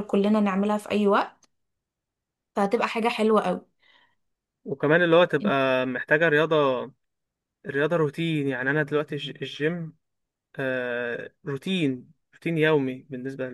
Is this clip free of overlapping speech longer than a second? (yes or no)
yes